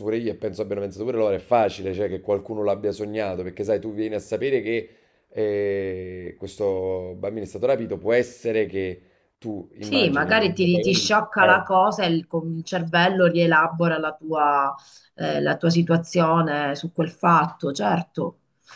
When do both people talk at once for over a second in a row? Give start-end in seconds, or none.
none